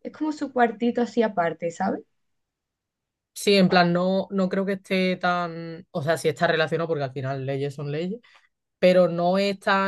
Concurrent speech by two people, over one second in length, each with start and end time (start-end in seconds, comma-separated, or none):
none